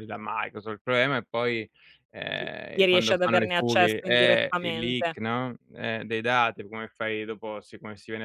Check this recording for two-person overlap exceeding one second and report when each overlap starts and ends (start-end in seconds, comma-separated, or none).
2.3-5.2